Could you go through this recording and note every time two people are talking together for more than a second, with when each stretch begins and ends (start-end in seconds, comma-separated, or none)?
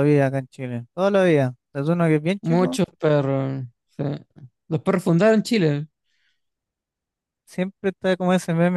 none